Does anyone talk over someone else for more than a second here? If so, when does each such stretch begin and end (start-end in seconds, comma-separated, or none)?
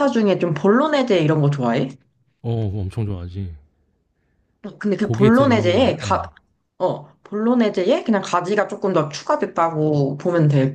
5.0-6.2